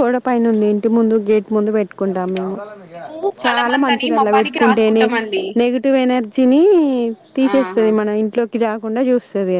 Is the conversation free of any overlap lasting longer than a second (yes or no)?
no